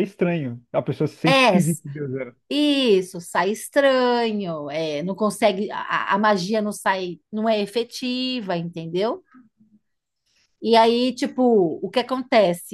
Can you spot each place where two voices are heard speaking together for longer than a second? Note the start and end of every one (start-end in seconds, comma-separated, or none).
none